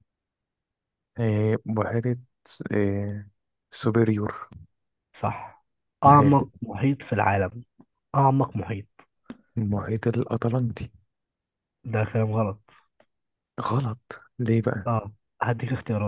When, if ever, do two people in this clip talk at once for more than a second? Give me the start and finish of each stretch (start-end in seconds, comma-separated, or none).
none